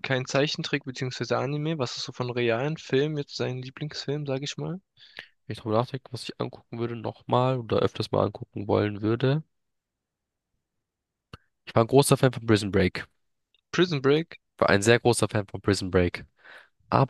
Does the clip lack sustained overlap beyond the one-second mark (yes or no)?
yes